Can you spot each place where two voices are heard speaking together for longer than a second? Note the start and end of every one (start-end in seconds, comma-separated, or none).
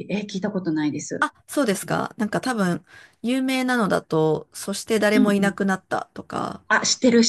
none